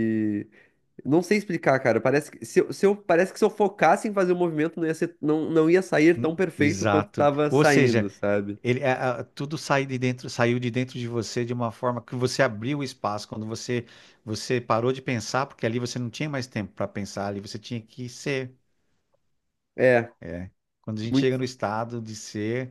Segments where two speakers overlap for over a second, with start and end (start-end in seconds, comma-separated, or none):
6.2-8.1